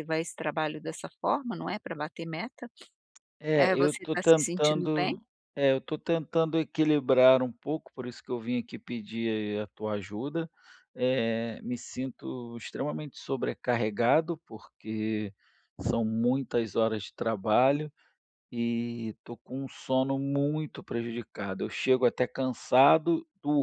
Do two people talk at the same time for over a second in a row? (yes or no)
yes